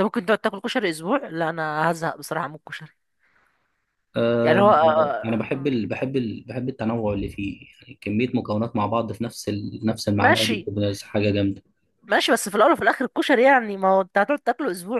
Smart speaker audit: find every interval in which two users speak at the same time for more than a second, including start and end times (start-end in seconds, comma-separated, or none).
4.4-5.7